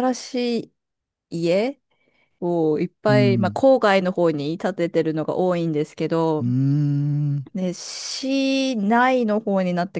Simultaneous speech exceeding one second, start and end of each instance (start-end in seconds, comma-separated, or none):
none